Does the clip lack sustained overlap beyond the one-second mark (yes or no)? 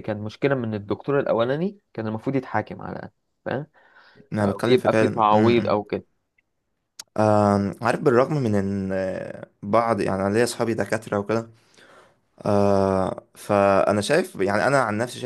no